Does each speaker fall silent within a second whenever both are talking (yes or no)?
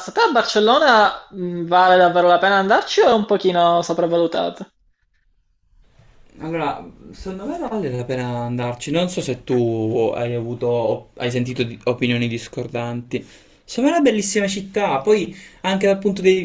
yes